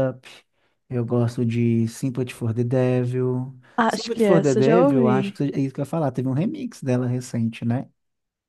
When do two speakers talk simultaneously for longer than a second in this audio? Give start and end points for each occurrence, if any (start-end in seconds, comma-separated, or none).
3.8-5.4